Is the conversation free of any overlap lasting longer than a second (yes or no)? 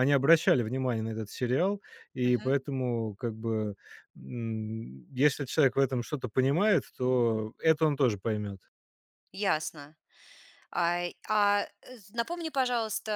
yes